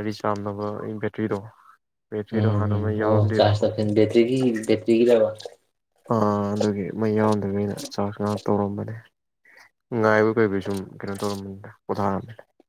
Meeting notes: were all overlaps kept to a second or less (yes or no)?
no